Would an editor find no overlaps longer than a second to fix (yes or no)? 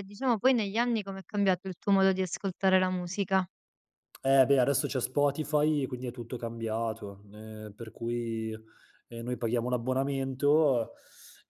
yes